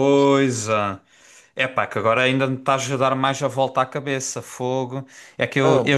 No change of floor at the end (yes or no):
yes